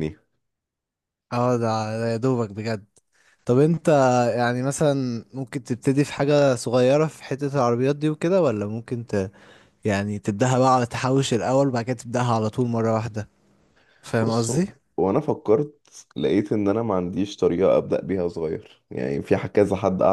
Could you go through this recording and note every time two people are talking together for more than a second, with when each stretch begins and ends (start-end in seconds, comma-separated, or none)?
none